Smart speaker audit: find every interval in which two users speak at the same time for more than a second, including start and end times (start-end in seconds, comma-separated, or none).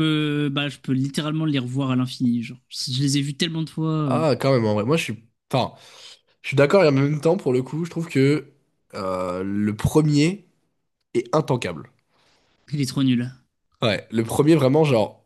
none